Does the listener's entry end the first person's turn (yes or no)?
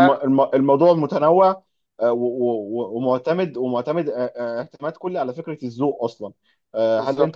no